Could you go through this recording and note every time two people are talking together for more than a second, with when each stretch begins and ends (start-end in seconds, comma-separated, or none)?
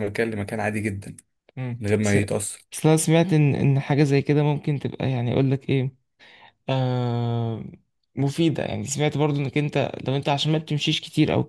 none